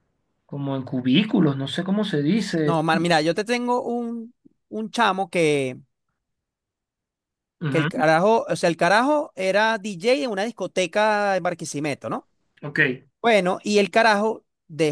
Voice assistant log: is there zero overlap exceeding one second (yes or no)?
yes